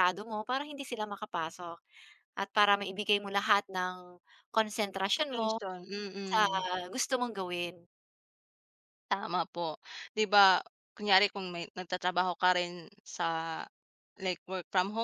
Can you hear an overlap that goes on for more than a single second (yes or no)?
no